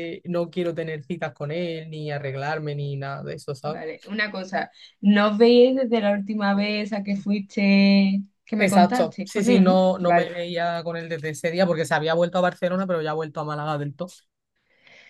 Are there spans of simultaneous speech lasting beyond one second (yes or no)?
yes